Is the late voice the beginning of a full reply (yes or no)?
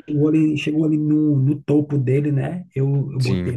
yes